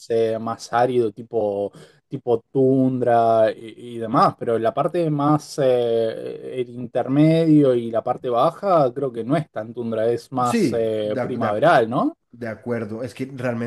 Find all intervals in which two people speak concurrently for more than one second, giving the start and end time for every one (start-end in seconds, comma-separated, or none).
10.4-11.7